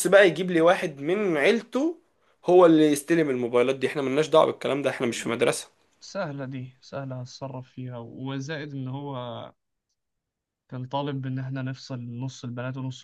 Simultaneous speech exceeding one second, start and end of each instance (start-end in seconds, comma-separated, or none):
none